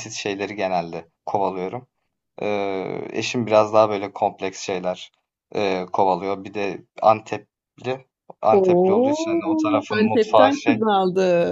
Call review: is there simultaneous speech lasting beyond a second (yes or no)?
yes